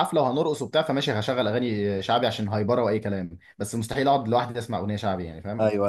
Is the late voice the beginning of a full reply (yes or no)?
yes